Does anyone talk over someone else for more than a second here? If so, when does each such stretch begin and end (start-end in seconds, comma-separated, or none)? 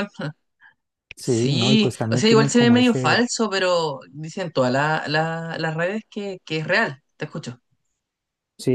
1.2-3.2